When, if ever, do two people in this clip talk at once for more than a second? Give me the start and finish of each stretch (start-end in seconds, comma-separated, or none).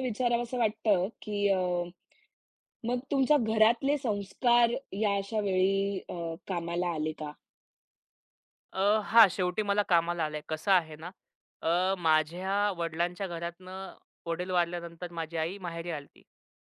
none